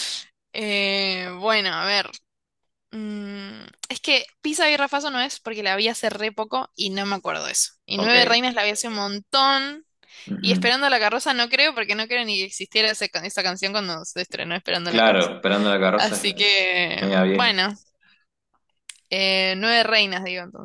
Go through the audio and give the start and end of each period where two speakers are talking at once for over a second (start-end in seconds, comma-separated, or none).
15.9-17.6